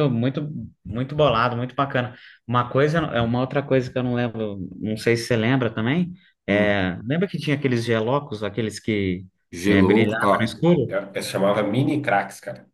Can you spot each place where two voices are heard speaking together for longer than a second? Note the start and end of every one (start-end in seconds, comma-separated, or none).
9.7-11.0